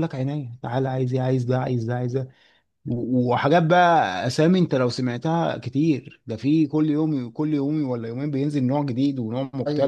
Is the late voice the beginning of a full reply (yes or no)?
yes